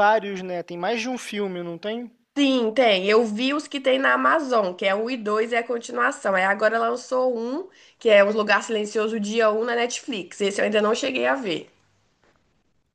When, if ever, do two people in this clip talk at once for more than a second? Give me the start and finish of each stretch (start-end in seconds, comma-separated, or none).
none